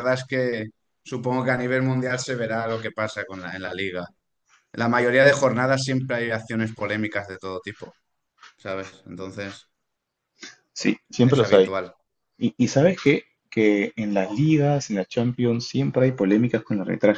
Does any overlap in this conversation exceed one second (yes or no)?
no